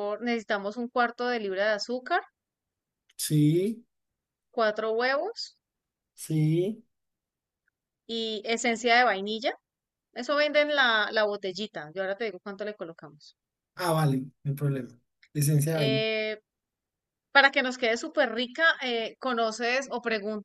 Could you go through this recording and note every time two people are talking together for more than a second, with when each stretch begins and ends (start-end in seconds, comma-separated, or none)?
none